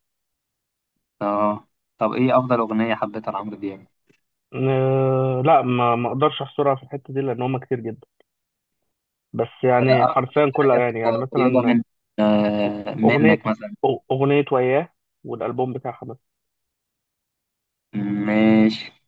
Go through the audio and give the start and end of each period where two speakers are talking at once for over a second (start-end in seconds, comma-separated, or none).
9.7-11.8